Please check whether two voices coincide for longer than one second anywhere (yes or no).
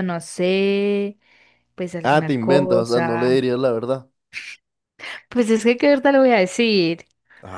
yes